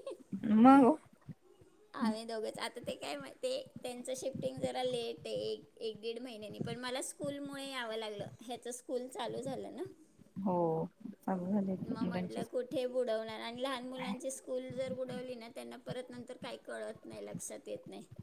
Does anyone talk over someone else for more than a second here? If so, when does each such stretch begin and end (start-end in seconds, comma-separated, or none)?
none